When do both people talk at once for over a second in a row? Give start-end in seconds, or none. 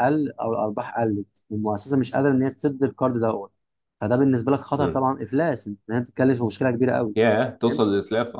none